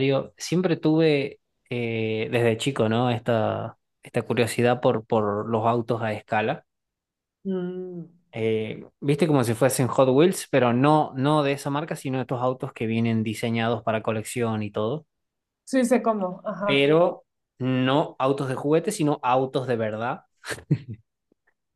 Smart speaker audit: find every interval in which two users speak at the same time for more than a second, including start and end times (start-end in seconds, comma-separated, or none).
none